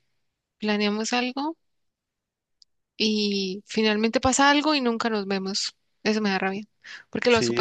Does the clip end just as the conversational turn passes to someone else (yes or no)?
yes